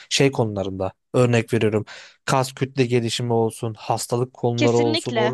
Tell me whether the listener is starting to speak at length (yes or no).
no